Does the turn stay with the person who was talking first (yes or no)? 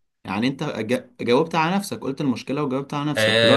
no